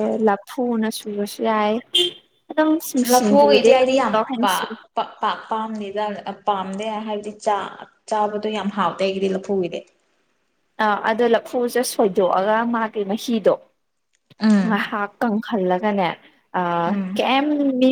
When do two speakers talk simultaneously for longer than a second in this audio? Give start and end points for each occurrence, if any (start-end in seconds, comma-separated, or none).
3.1-4.7